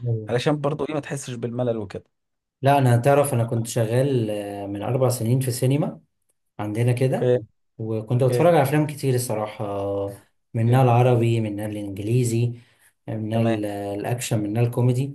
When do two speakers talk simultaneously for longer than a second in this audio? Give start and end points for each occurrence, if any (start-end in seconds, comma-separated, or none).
none